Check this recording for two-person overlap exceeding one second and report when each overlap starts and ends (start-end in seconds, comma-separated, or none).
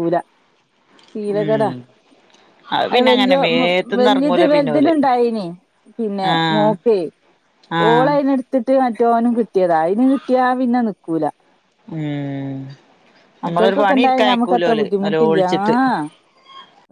13.5-15.7